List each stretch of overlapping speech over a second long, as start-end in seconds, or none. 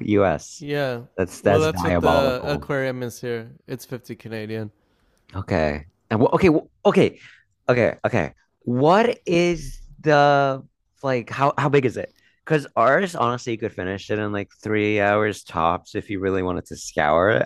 1.4-2.7